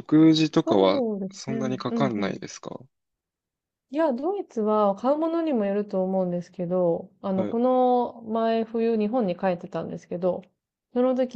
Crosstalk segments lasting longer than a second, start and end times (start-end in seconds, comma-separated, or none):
0.5-2.4